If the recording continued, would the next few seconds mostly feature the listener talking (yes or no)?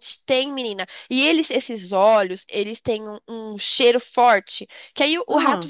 no